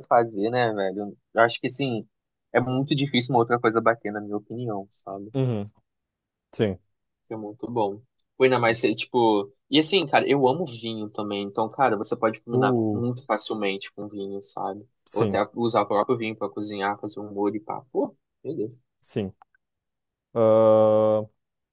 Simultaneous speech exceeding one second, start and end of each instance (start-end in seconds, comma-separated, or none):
none